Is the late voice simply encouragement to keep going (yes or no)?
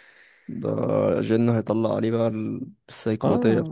no